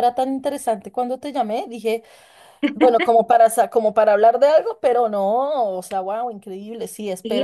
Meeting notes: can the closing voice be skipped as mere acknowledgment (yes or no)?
no